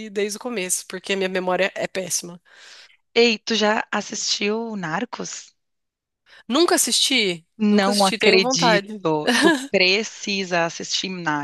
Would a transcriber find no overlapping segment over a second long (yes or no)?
no